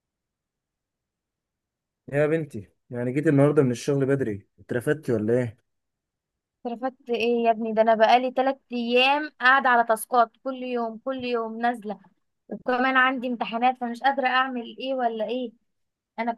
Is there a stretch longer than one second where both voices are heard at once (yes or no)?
no